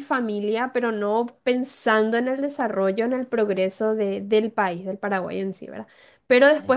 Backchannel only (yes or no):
yes